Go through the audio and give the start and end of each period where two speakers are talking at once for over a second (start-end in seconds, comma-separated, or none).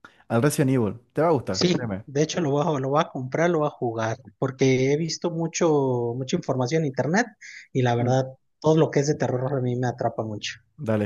none